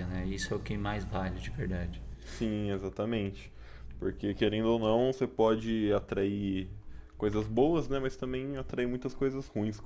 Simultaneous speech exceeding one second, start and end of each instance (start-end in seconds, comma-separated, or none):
none